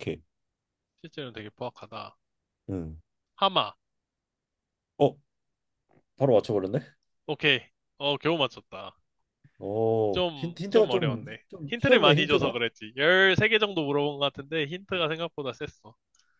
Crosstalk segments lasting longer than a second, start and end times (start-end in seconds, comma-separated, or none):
10.1-12.6